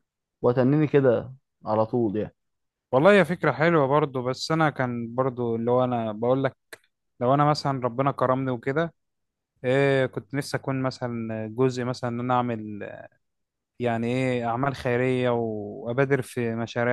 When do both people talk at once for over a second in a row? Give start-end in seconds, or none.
none